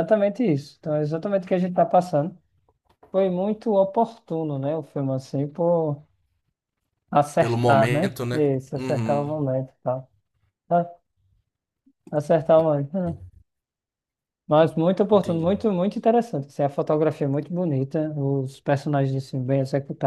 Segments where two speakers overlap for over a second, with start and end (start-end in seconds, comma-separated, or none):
7.4-9.3